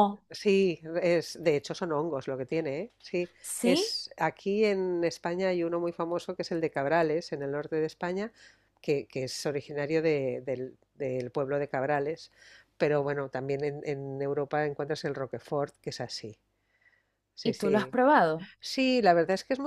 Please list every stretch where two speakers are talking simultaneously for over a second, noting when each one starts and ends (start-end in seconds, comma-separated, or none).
none